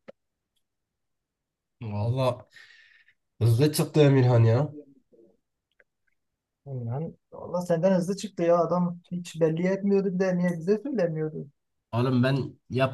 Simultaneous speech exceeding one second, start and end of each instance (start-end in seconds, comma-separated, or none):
none